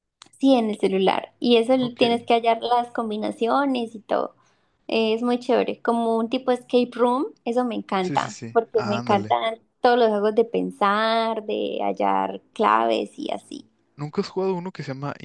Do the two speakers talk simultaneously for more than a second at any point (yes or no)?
yes